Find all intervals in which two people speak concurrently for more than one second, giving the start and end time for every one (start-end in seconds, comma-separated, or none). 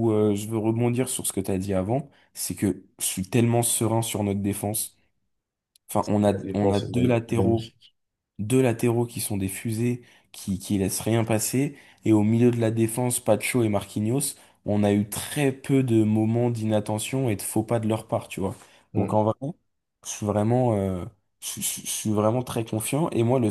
6.3-7.7